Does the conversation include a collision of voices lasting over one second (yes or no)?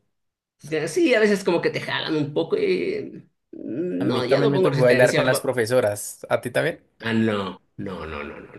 yes